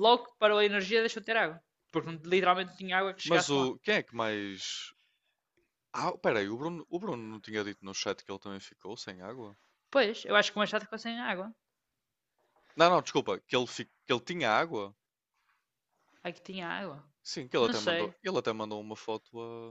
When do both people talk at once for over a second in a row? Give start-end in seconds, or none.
none